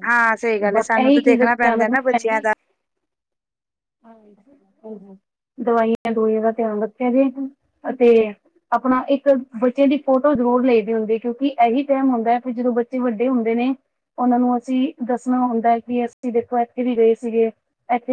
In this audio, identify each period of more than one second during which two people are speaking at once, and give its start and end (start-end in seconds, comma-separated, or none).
0.8-2.5